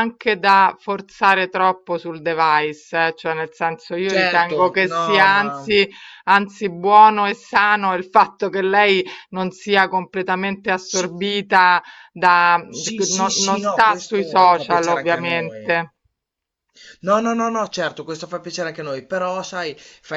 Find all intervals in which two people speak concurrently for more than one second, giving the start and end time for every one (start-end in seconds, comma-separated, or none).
4.0-5.7, 13.1-15.8